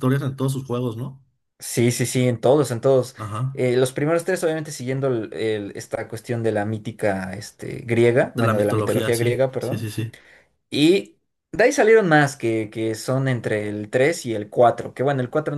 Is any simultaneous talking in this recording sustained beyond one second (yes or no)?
yes